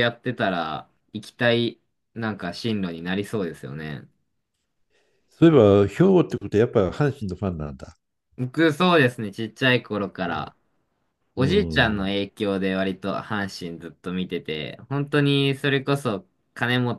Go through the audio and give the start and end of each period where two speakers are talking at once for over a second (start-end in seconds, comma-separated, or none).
none